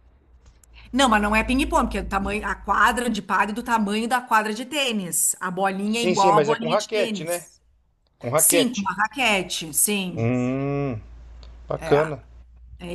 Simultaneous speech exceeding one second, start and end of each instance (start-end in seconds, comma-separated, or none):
5.9-7.4